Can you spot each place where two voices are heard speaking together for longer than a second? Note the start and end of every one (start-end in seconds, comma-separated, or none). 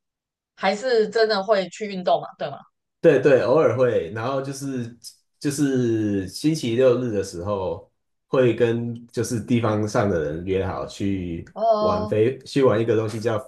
none